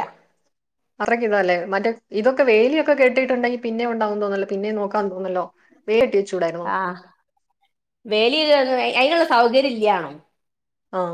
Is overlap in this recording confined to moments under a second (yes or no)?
yes